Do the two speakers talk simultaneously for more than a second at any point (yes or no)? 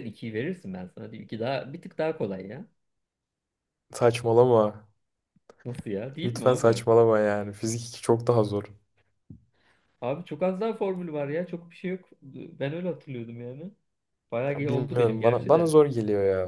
yes